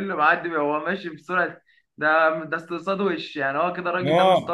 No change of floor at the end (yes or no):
no